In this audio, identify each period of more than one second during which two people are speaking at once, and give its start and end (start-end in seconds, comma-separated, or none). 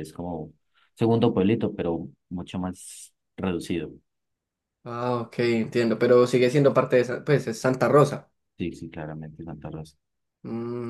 none